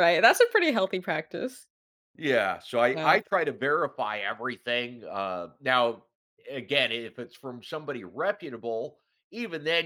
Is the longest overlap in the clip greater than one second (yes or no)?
no